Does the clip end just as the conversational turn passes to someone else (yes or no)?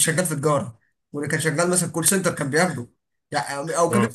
no